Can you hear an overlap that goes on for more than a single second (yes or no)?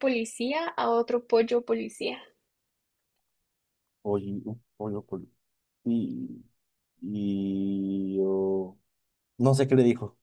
no